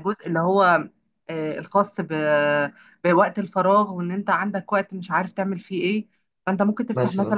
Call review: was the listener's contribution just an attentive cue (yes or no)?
yes